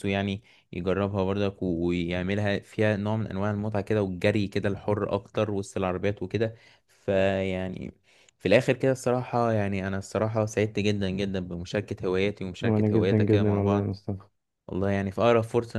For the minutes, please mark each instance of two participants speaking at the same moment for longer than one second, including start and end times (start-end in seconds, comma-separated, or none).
12.6-13.9